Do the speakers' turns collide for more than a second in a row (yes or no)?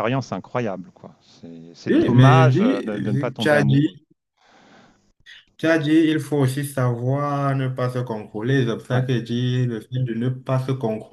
yes